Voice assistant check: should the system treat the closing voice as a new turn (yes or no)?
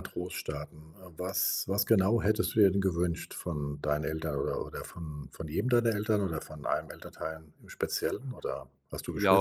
yes